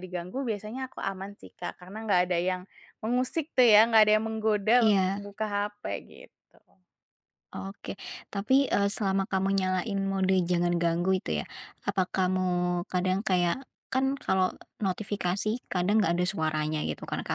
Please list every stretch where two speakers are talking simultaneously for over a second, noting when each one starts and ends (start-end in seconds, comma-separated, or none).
none